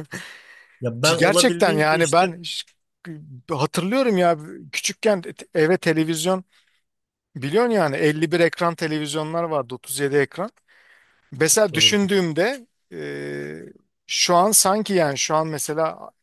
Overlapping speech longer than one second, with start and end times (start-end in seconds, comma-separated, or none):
1.0-2.2